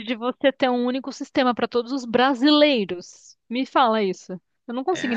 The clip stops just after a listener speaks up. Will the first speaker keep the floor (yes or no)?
no